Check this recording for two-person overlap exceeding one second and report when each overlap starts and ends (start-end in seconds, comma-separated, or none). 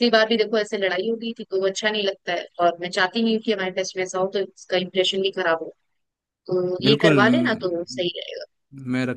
6.8-8.1